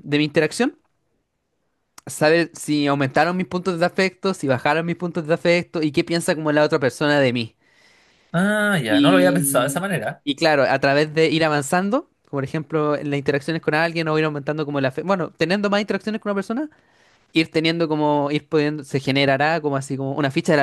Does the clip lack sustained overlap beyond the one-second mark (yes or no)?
no